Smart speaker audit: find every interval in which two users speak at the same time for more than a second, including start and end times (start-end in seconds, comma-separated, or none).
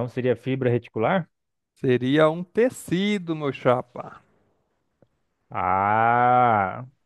none